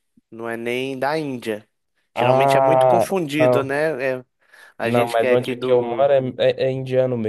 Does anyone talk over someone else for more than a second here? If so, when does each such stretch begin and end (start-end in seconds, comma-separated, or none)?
2.1-3.8, 4.8-6.1